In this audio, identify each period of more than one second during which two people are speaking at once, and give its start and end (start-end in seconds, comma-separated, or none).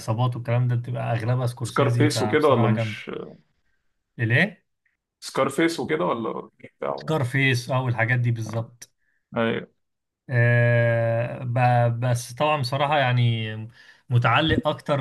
1.6-3.0